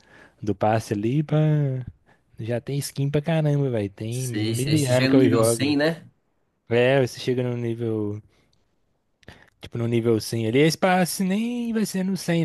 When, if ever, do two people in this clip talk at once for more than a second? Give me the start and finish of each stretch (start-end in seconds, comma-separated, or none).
4.1-5.8